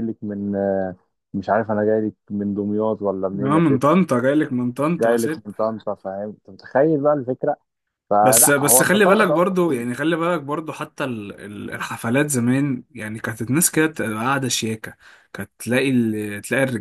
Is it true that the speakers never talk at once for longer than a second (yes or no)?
no